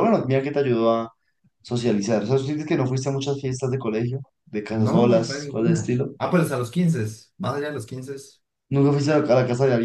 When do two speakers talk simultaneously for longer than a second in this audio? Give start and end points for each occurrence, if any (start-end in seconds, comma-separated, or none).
4.7-6.1